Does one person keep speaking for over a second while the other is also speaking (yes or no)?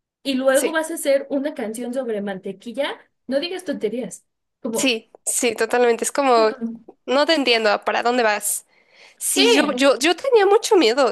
no